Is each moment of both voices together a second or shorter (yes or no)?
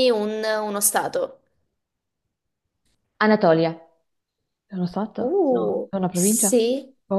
no